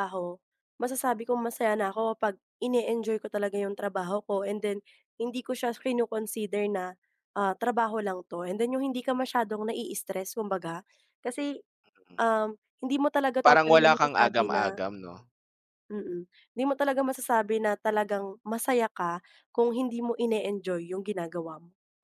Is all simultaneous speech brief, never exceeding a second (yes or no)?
no